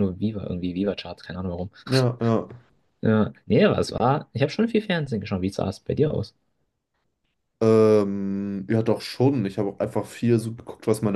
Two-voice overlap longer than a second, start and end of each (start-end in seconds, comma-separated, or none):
none